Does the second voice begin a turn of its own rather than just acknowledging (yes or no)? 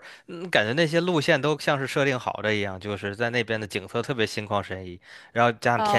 yes